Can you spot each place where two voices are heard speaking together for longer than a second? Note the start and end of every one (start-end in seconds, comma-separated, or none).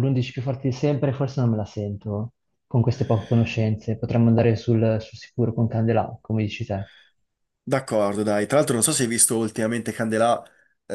none